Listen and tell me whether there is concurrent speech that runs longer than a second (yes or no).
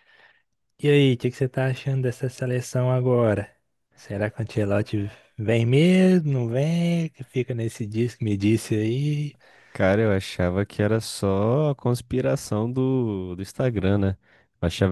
no